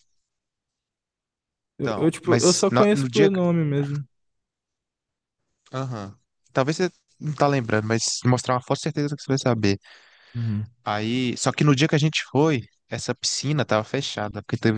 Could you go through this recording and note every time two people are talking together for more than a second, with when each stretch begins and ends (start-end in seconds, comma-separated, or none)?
1.8-3.4